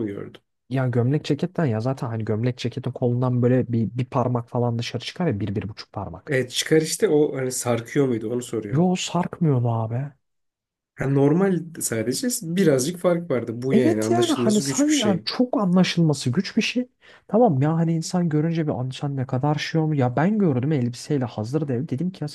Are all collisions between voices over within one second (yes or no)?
no